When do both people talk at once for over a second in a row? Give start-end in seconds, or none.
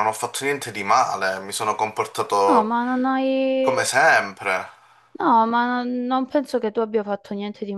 none